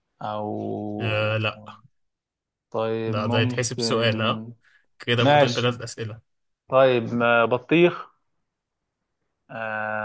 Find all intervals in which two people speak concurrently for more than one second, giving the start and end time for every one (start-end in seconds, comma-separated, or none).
3.1-4.4